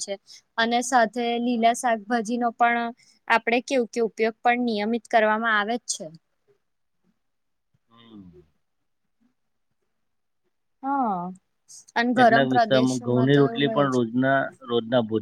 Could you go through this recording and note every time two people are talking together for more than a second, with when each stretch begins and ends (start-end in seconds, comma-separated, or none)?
12.2-14.0